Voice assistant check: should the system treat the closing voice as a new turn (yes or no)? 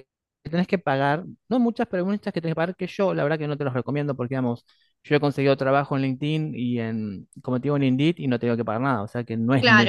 yes